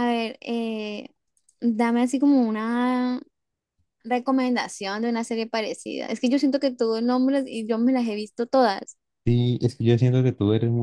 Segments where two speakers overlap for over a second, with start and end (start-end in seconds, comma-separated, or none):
none